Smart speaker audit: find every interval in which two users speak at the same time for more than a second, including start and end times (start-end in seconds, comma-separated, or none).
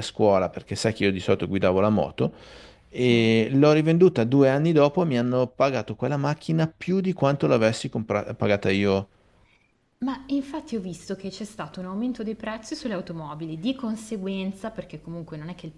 none